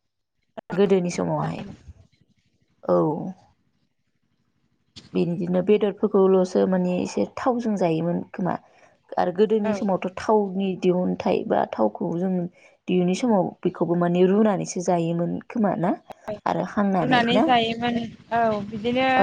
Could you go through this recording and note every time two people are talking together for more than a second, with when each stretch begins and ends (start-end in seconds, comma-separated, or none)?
none